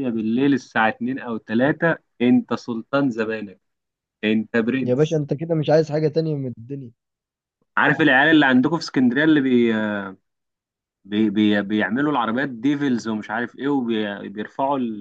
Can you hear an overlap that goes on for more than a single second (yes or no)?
no